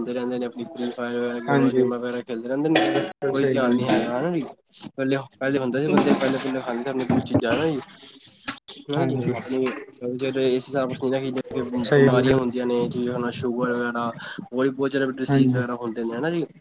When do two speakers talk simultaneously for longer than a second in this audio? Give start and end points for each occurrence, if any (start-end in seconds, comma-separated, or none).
none